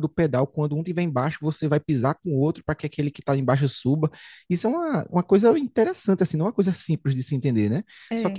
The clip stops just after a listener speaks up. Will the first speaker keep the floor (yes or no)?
yes